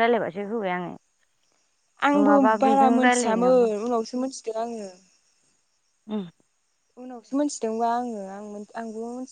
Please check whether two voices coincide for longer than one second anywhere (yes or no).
yes